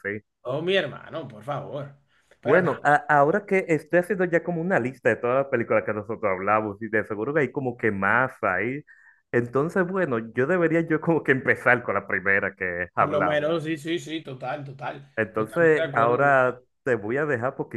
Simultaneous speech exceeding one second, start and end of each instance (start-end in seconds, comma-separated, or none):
15.2-16.6